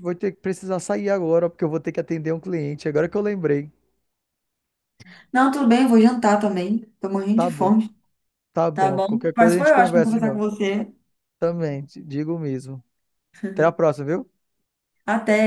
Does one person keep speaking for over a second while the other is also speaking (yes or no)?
yes